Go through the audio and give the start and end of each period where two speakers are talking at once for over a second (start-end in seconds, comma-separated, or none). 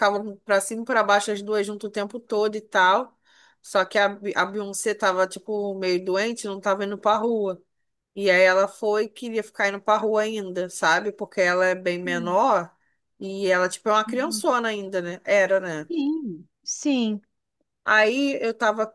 none